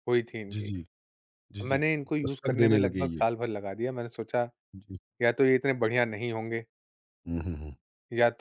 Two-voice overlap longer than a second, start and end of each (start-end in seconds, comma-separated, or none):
1.7-3.2